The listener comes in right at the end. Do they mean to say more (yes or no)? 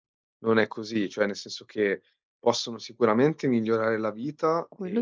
no